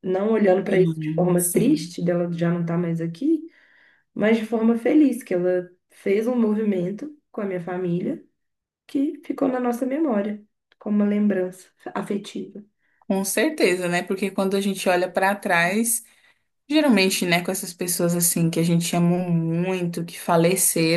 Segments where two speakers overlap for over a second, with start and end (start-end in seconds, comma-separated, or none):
0.7-2.0